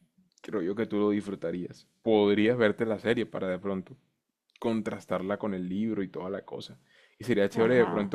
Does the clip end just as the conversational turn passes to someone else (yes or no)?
no